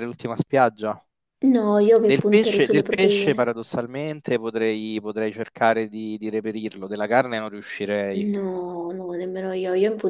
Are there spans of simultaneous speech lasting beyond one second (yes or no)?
yes